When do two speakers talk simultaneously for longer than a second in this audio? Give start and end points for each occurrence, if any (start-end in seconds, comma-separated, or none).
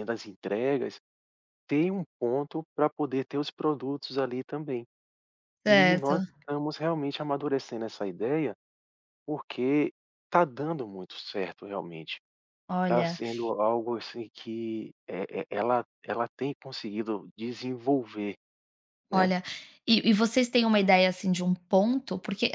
none